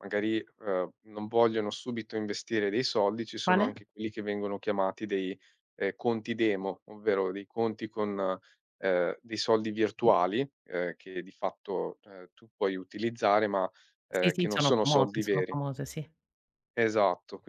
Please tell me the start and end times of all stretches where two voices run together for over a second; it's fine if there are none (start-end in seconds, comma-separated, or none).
14.1-15.6